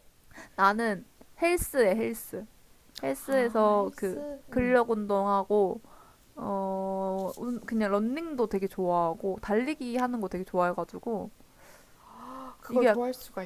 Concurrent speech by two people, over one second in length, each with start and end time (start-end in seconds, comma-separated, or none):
3.2-4.8